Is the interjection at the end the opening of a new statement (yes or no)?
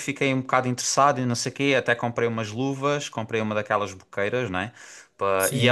no